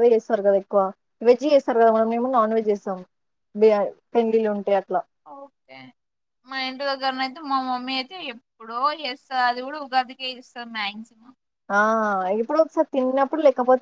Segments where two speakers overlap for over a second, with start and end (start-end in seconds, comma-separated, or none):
none